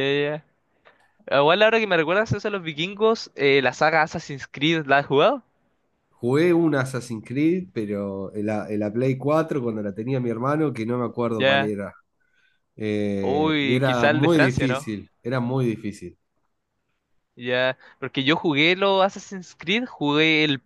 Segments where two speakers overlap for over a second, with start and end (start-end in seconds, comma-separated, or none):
13.2-14.9